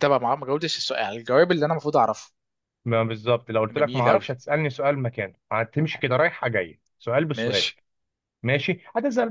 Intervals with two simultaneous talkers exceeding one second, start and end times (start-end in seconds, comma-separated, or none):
none